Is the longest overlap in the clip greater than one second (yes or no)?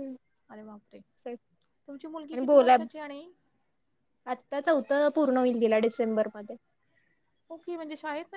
no